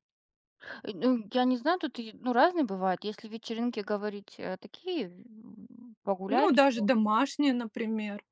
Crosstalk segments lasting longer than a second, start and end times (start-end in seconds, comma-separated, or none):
none